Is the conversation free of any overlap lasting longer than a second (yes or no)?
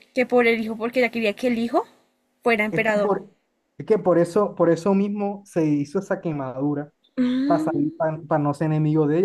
yes